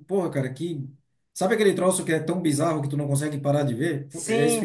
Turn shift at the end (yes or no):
yes